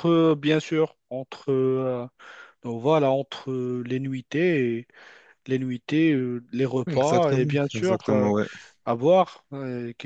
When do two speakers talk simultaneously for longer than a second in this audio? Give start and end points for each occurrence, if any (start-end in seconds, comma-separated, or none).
6.9-8.3